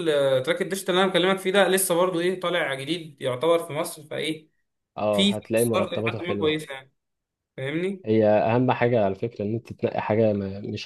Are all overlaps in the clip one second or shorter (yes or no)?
no